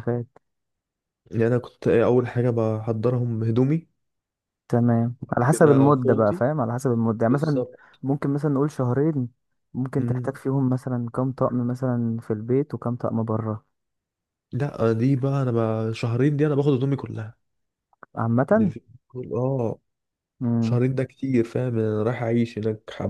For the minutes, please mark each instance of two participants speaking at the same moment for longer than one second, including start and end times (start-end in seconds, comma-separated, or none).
5.2-6.4